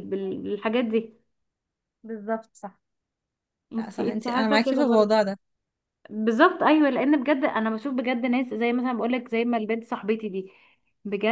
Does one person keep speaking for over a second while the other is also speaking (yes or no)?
yes